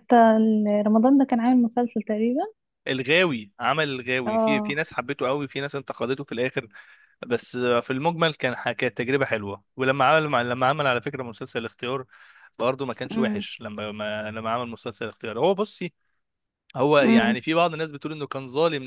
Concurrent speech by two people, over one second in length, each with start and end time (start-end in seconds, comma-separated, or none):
none